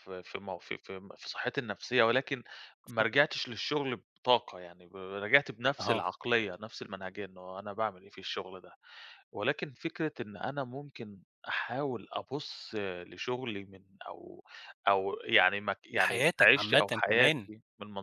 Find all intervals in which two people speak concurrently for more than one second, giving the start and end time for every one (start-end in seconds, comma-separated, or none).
15.9-17.5